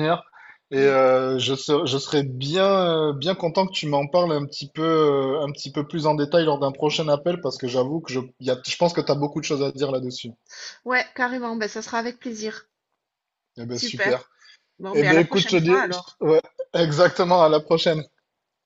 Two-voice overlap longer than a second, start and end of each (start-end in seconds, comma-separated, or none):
14.9-16.2